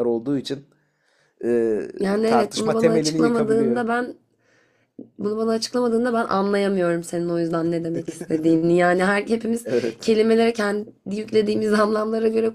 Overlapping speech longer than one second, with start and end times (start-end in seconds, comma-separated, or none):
2.2-3.8